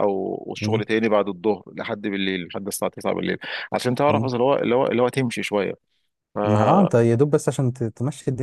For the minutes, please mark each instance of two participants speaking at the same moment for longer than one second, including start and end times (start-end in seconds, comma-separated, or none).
none